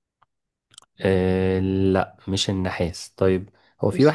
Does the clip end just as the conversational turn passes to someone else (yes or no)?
no